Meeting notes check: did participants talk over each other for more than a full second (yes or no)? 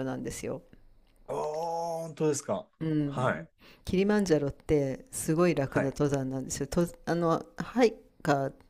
no